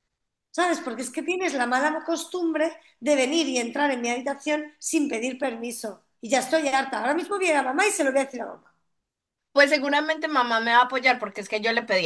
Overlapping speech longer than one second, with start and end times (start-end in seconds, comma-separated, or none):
none